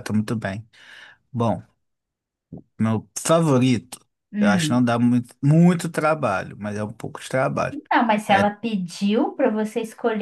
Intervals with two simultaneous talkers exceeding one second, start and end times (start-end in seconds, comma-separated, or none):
none